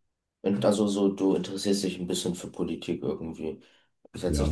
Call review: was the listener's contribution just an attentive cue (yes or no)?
yes